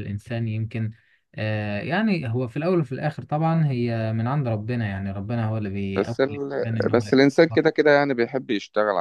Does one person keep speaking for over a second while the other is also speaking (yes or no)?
yes